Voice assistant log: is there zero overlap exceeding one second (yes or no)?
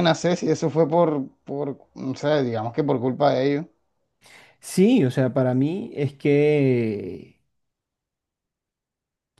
yes